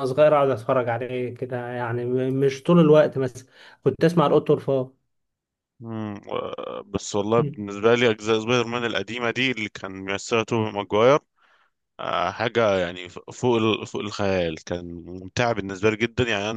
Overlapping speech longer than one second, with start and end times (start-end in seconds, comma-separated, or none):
none